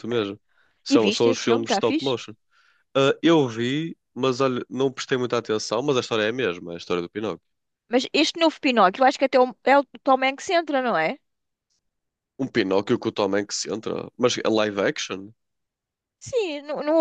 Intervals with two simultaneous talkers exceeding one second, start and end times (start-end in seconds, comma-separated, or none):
0.9-2.2